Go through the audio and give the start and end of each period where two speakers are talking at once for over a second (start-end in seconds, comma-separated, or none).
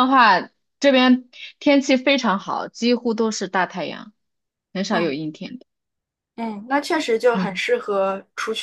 none